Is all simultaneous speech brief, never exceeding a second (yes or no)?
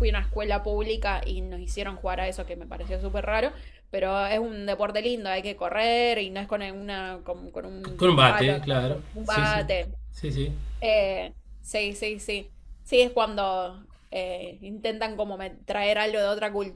no